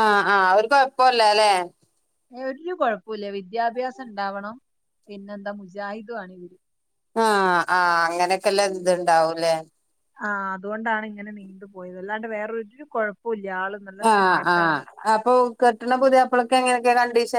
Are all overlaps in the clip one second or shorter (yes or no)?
yes